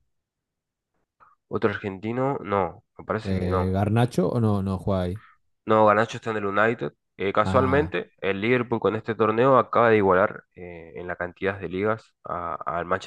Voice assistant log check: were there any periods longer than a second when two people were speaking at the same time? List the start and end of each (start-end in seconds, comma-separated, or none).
none